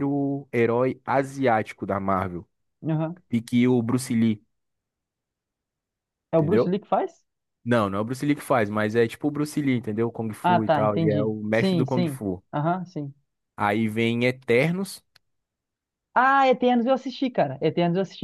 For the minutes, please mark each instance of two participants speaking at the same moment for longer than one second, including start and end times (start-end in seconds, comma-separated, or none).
10.4-12.4